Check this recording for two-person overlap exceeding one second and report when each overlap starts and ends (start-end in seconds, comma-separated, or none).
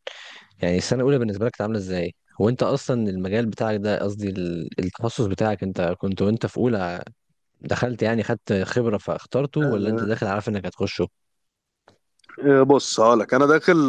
none